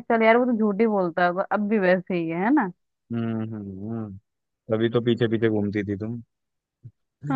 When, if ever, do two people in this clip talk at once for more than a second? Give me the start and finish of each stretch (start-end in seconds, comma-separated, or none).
none